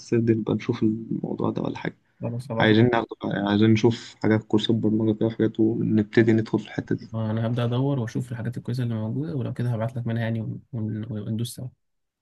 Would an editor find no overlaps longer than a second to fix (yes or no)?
yes